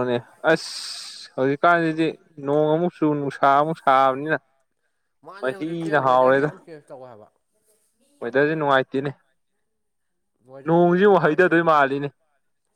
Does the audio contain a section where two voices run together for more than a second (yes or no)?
yes